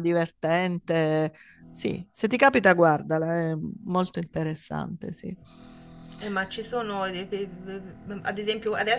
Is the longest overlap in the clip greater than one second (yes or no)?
no